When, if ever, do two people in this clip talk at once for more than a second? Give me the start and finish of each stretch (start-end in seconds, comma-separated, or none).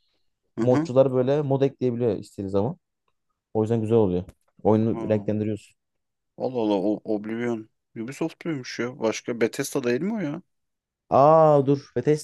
none